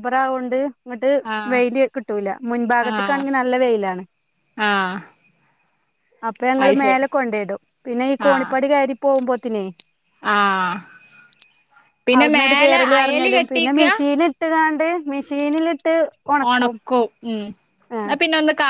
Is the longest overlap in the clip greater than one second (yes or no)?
yes